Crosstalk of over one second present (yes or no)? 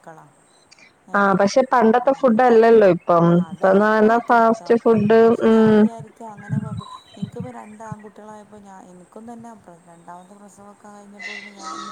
no